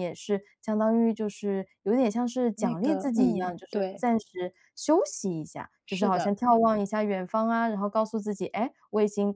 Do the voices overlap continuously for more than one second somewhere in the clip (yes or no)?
yes